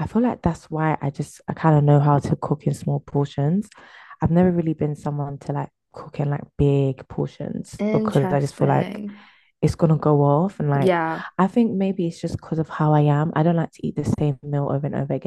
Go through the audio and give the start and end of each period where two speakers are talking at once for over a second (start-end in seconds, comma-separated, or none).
7.8-9.0